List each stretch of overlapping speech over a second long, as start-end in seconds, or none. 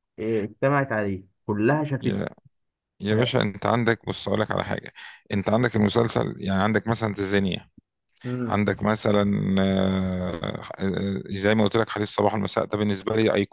none